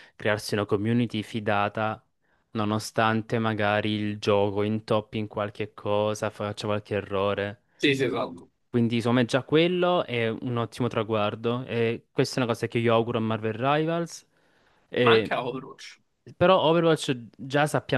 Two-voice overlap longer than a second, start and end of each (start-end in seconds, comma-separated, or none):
none